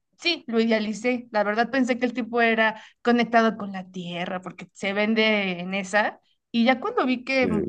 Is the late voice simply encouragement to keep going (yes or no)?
yes